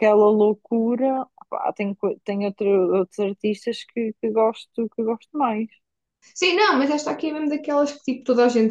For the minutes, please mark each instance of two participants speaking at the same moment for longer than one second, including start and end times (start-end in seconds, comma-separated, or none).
none